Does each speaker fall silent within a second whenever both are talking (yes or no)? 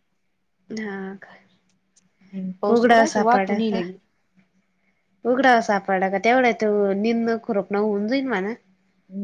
no